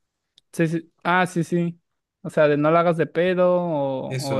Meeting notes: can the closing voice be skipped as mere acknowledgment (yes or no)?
no